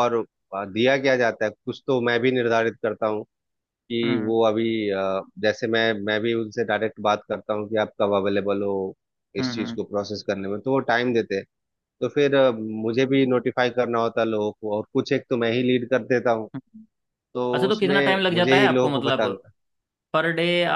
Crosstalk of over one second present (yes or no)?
yes